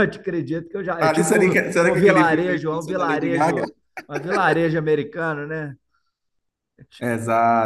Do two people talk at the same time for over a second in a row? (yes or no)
yes